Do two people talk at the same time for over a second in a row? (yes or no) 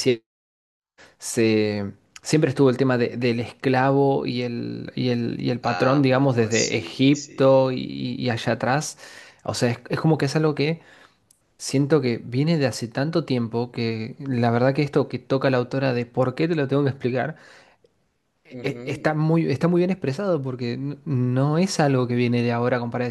yes